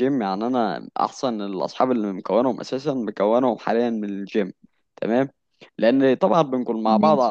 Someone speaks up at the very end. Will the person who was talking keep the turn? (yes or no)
yes